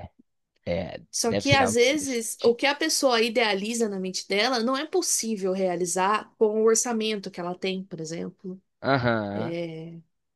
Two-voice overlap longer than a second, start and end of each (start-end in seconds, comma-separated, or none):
1.1-2.6